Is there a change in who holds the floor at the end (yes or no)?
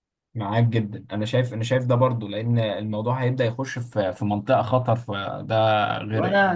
yes